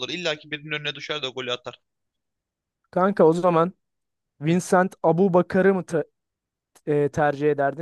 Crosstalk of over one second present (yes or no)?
no